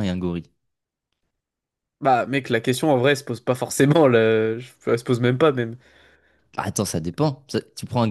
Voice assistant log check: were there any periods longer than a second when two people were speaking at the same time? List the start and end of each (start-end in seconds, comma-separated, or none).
none